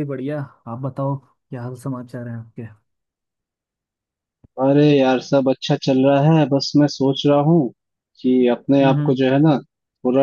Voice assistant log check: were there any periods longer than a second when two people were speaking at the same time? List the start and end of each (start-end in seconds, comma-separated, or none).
none